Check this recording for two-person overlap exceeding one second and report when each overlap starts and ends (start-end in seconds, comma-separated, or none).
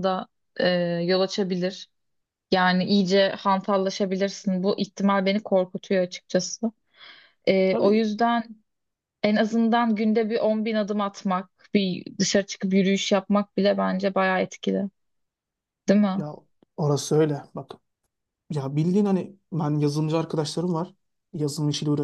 none